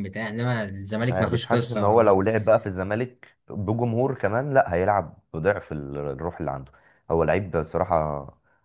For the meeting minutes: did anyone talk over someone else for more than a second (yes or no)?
yes